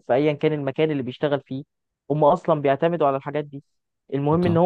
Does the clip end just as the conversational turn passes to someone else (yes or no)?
no